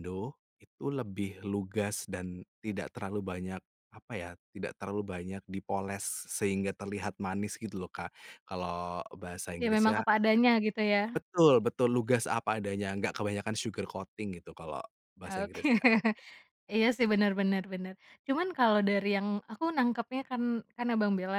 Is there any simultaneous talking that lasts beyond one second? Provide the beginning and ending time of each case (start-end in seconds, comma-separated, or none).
none